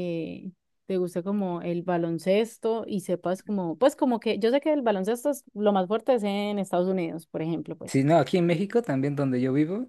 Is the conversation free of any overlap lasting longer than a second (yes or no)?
yes